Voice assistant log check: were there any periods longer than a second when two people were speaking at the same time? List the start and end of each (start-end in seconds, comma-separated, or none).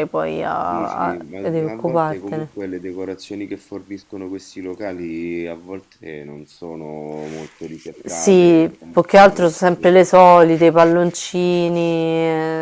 0.6-2.5, 8.1-10.0